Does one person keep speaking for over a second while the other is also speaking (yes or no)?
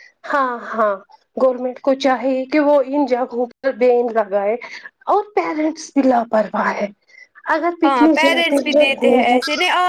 yes